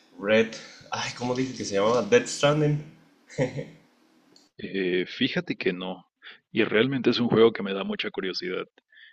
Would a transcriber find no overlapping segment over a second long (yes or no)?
yes